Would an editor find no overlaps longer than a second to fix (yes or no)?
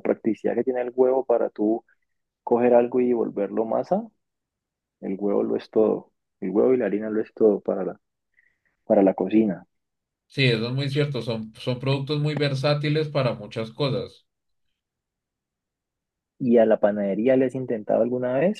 yes